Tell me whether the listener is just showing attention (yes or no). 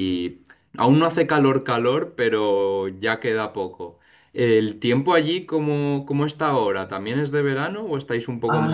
no